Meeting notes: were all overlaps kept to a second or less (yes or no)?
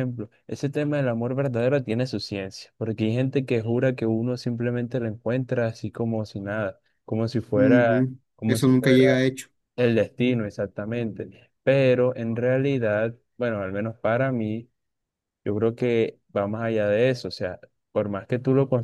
no